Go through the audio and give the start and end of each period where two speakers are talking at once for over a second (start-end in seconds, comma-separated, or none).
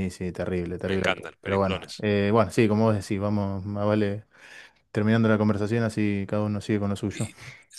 0.8-2.0